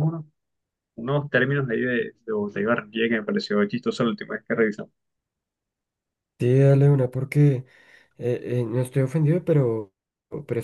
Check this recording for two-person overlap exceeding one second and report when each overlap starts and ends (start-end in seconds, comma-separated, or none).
none